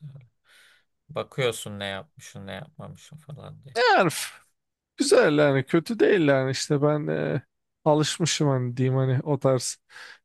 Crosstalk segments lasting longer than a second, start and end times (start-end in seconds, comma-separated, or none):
none